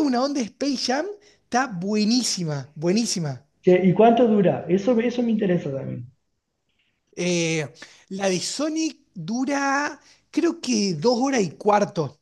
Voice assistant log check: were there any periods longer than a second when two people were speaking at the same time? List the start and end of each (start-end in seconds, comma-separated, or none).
none